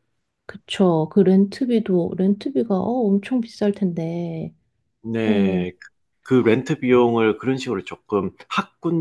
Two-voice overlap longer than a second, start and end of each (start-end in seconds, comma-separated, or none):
none